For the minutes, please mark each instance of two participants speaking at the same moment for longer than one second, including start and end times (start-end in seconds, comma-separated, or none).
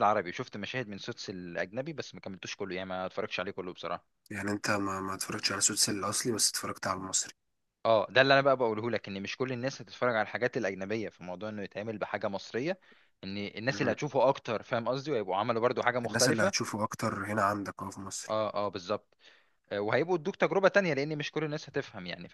none